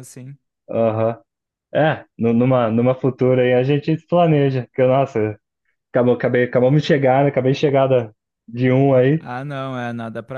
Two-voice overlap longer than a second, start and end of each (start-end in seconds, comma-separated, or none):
none